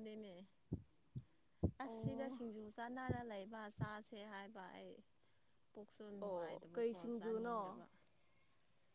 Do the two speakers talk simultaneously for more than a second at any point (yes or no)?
yes